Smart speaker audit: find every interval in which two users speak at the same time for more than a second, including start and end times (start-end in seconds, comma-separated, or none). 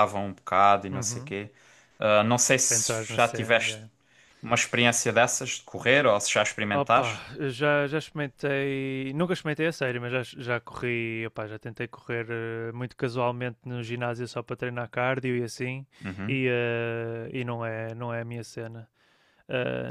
2.6-3.9